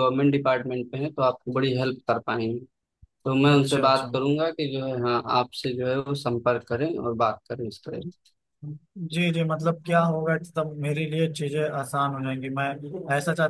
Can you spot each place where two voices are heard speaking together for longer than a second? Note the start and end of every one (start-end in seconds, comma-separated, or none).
none